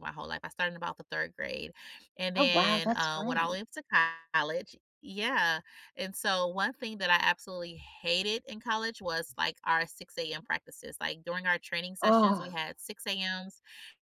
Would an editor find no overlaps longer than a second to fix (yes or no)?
no